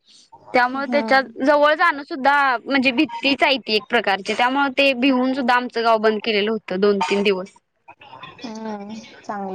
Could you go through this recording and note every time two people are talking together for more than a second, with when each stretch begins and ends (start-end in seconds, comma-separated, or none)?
none